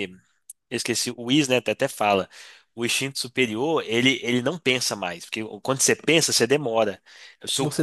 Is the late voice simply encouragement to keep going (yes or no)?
yes